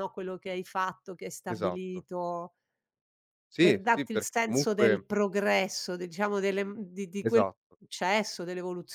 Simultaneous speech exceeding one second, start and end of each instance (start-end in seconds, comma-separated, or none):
3.6-5.0